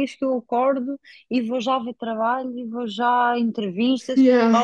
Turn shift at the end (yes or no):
no